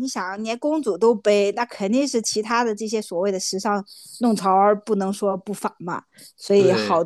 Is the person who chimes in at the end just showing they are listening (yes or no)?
yes